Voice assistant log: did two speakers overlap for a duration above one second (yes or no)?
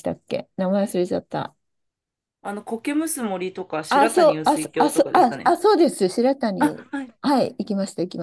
yes